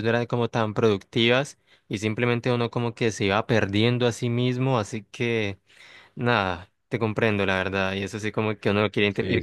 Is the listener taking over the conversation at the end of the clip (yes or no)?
no